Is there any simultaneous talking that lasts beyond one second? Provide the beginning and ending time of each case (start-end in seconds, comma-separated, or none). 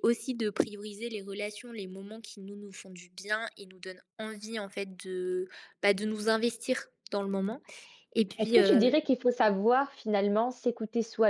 none